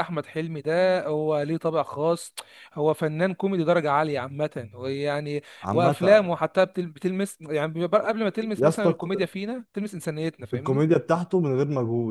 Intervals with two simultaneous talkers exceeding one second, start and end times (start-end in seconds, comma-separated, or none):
none